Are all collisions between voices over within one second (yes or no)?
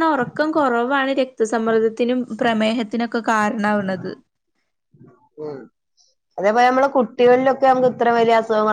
yes